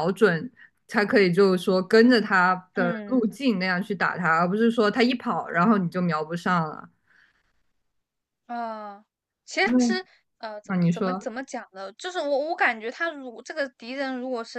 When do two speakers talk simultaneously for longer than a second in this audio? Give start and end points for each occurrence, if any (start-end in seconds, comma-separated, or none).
none